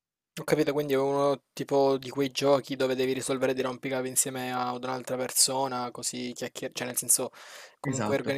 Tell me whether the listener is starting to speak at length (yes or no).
no